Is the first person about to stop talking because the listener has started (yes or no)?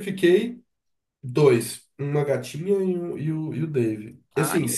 no